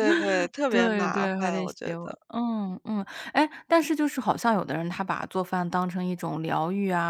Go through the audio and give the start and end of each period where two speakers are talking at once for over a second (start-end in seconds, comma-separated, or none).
0.7-2.2